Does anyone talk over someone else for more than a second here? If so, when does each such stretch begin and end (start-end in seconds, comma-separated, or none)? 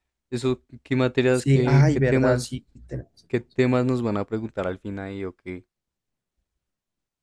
1.3-2.6